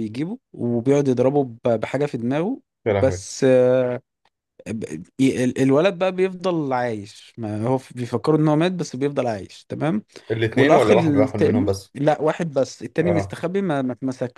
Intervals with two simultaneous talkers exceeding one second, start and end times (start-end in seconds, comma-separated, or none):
10.6-11.9